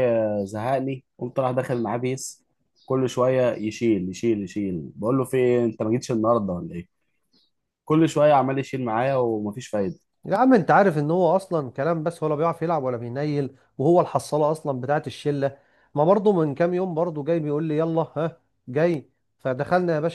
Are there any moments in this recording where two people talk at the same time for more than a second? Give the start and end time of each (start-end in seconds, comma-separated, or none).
none